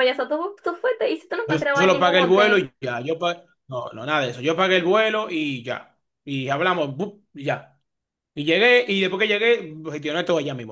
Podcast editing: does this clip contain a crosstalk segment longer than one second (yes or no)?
yes